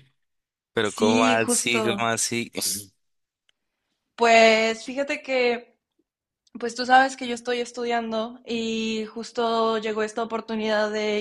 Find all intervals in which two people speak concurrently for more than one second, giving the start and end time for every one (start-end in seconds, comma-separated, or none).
0.9-2.1